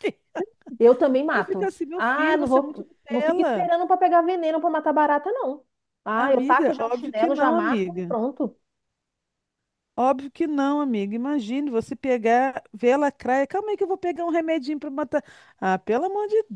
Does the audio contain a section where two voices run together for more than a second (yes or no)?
yes